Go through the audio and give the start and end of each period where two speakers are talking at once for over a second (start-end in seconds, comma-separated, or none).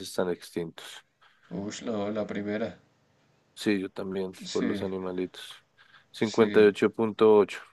none